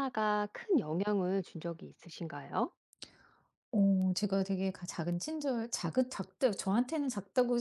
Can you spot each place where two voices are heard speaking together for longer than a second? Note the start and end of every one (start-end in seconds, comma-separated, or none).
none